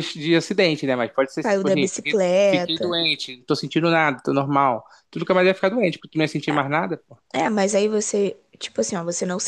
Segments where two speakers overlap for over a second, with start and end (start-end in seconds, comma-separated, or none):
1.4-2.9